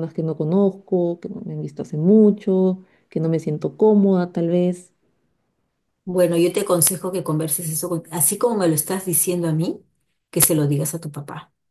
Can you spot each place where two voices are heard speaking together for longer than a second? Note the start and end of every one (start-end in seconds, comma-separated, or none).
none